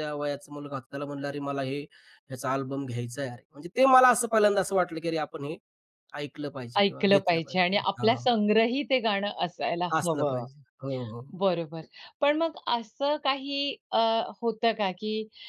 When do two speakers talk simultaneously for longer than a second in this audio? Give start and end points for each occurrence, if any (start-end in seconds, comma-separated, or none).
6.8-8.3